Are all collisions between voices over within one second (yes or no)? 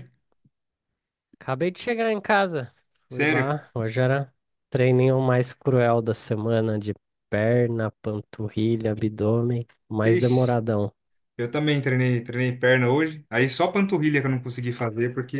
yes